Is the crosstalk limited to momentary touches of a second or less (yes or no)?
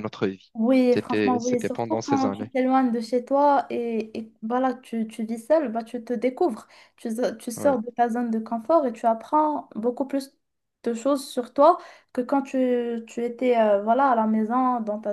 no